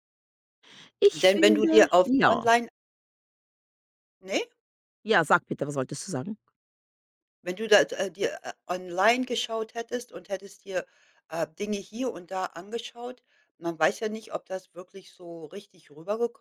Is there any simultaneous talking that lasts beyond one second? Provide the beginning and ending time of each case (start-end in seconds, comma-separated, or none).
1.1-2.4